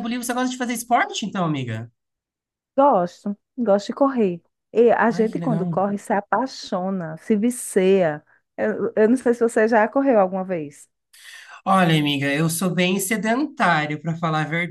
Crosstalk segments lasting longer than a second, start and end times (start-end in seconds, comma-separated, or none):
none